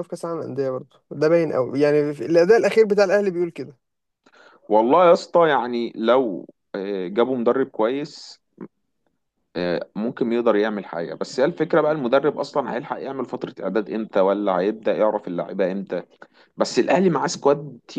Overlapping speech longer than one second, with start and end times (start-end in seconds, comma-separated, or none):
none